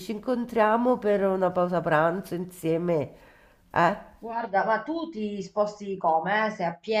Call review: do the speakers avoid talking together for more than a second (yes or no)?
yes